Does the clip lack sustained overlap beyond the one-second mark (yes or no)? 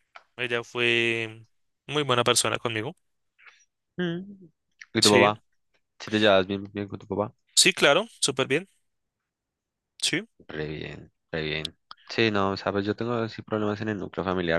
yes